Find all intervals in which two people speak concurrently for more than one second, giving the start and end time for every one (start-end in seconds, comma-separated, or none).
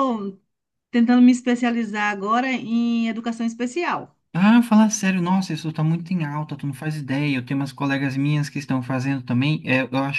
none